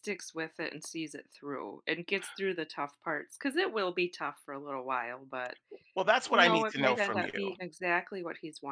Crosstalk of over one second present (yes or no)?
yes